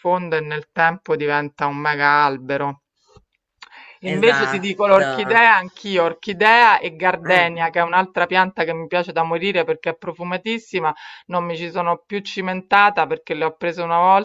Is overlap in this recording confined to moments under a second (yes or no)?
no